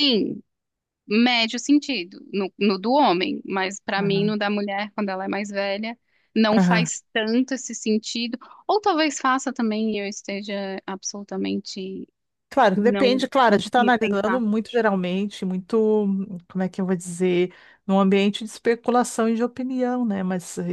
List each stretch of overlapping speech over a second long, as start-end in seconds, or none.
12.8-14.4